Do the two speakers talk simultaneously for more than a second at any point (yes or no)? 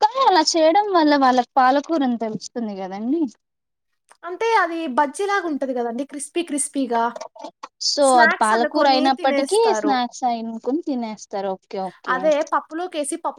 yes